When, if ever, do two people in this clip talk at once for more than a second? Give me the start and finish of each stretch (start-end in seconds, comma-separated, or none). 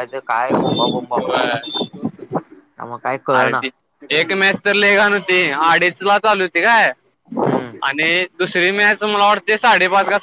none